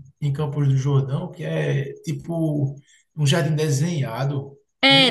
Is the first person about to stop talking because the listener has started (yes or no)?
yes